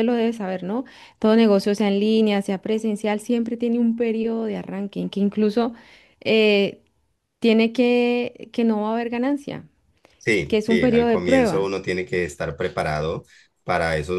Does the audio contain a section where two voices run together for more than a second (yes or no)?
yes